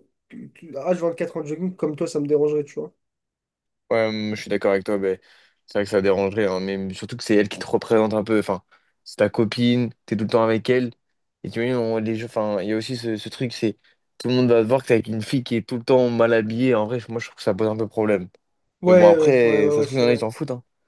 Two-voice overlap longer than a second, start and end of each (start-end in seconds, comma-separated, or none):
18.9-20.2